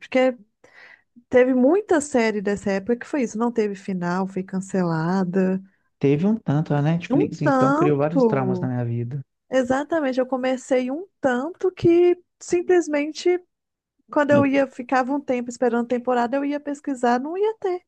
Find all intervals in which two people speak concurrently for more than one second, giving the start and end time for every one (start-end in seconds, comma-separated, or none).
7.1-8.7